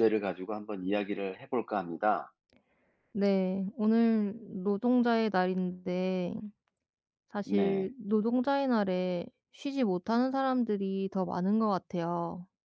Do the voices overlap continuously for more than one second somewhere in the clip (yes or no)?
no